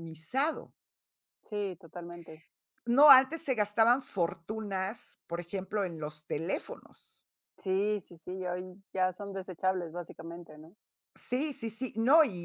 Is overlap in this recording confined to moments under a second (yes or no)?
yes